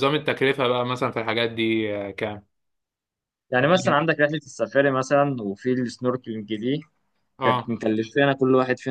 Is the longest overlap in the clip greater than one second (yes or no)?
no